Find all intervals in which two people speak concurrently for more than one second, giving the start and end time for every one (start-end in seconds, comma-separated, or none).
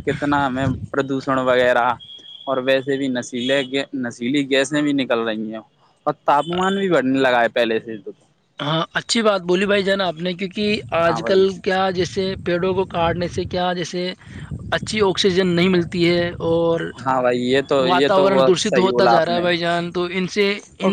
17.9-19.4